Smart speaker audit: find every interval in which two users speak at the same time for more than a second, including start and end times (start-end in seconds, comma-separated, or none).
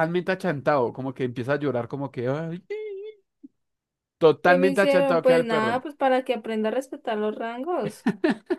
4.5-5.8